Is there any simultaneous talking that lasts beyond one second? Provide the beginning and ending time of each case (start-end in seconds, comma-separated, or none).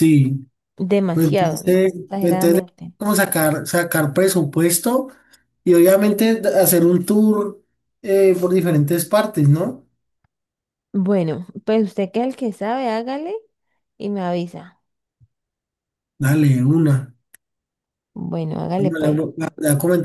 1.1-2.9